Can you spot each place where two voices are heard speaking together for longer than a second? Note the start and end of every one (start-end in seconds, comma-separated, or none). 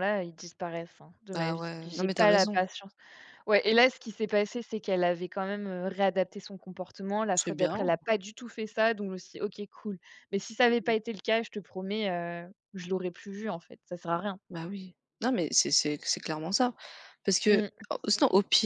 1.3-2.6